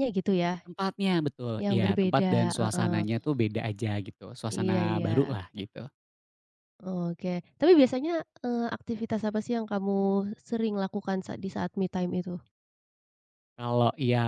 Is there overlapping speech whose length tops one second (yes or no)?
yes